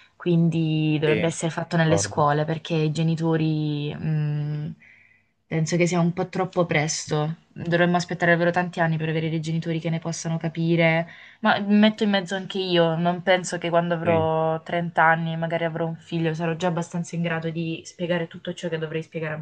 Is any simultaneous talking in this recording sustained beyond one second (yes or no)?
yes